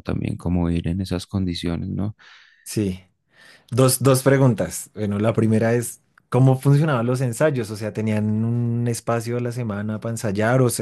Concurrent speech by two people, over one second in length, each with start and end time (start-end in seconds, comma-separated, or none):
none